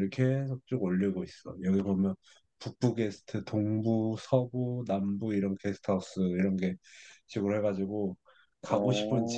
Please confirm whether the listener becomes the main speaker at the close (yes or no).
no